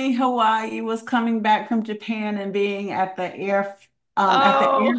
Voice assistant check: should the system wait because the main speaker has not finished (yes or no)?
yes